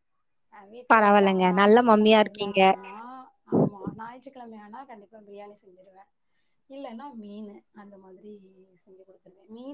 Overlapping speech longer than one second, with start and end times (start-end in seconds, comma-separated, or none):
0.9-2.6